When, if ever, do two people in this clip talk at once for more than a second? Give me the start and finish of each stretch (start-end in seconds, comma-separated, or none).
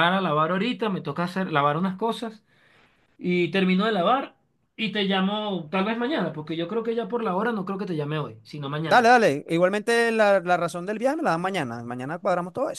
none